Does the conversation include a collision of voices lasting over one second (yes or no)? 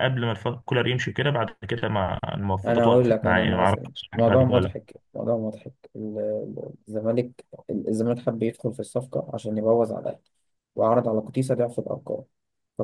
yes